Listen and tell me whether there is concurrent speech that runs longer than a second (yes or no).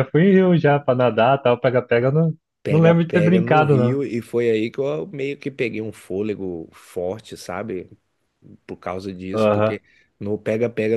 yes